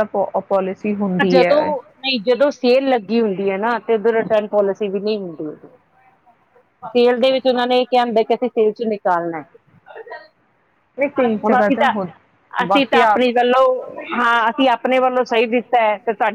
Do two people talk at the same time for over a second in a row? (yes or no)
no